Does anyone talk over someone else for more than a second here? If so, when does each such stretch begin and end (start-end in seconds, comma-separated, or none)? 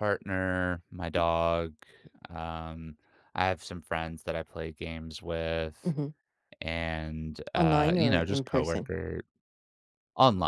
7.5-8.9